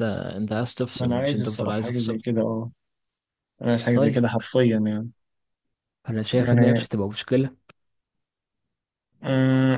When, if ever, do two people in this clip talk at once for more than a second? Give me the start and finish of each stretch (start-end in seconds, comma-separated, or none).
0.9-2.2